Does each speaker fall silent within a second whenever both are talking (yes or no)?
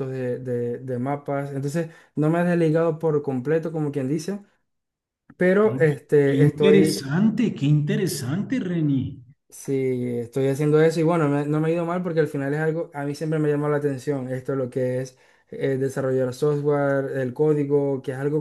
no